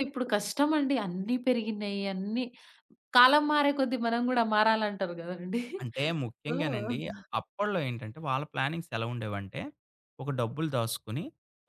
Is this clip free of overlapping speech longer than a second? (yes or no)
yes